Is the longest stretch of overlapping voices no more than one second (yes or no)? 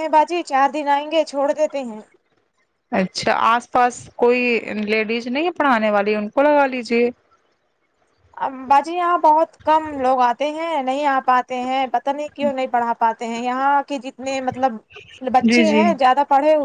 yes